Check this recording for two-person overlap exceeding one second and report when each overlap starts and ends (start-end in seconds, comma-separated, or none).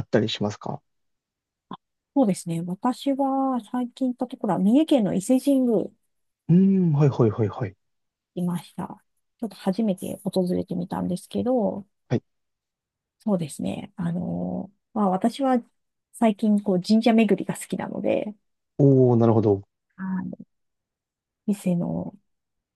none